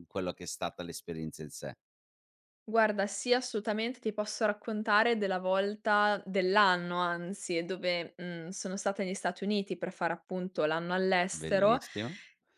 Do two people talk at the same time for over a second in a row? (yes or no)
no